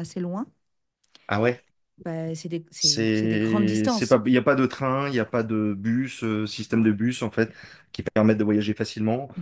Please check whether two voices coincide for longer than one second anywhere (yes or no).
yes